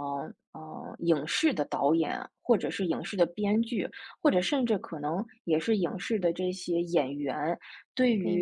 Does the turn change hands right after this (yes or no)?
no